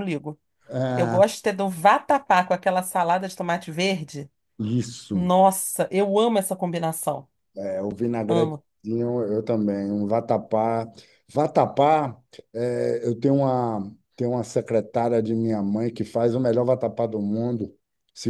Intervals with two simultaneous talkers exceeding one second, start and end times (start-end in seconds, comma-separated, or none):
none